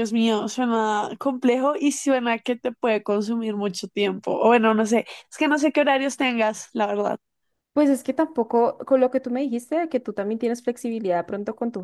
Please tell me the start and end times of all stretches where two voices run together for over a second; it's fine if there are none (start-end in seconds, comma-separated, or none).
none